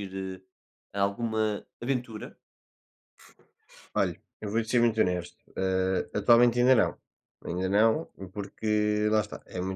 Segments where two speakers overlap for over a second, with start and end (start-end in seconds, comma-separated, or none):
none